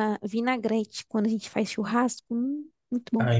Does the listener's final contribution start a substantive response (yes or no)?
yes